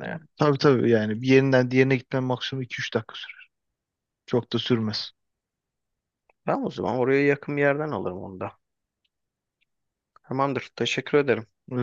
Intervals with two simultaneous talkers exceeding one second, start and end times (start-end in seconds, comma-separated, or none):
none